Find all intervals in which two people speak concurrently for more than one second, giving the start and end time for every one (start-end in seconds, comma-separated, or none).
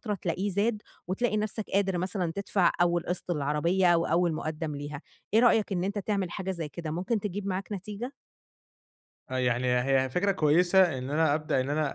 none